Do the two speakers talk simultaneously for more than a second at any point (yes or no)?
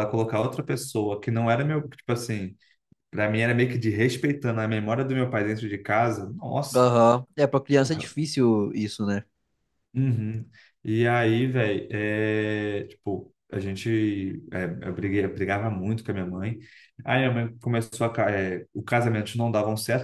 no